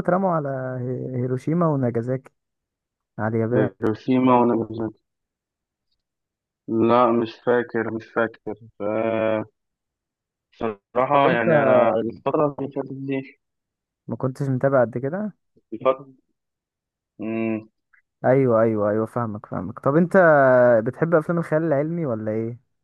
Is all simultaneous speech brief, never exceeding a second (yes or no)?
yes